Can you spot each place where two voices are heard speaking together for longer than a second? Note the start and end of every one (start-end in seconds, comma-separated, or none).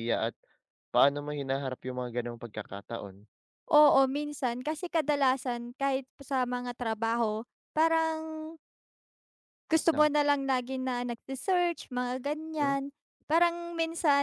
none